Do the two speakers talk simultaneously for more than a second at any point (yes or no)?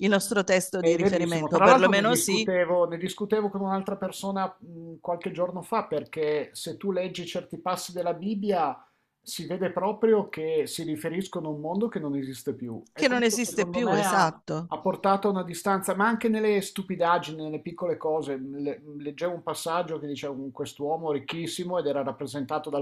yes